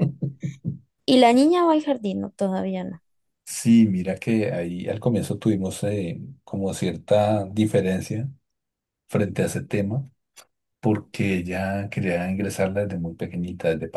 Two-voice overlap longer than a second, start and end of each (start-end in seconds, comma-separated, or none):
none